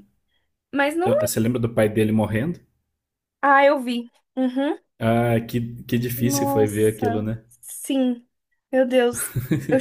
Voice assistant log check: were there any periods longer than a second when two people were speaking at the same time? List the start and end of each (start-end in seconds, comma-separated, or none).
6.2-7.4